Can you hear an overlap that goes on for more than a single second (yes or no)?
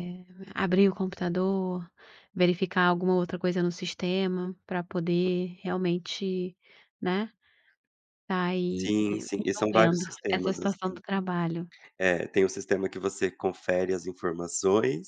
yes